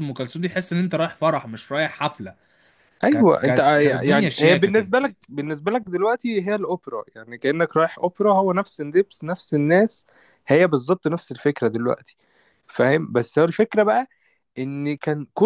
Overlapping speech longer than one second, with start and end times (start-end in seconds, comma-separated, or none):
3.1-4.9